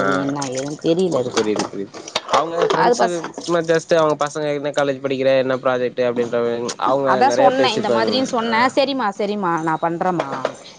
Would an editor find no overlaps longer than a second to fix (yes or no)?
yes